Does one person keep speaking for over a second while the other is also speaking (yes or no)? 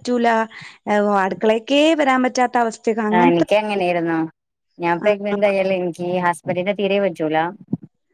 no